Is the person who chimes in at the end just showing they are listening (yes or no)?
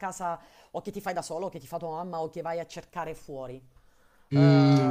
no